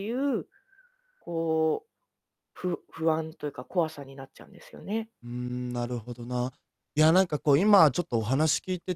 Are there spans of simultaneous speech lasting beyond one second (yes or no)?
no